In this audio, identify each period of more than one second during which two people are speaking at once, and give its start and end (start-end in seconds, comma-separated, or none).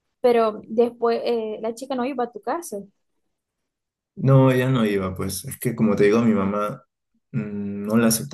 none